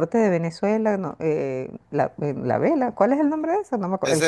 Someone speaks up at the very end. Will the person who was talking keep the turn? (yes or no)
no